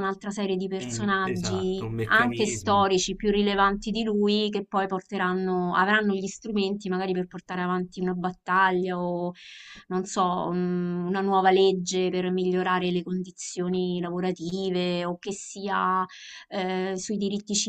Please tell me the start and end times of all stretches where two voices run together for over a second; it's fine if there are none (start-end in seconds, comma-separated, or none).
0.8-2.9